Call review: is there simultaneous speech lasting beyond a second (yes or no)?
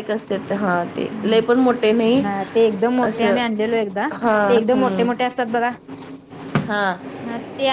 no